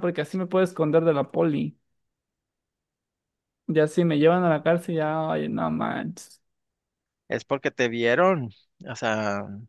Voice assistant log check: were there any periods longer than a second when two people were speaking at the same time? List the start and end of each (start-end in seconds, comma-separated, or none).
none